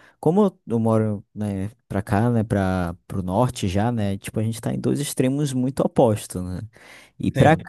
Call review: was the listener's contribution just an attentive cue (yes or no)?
yes